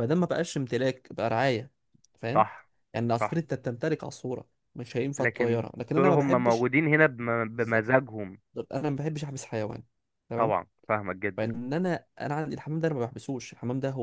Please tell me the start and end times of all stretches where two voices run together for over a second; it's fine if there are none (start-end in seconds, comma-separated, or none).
5.2-6.7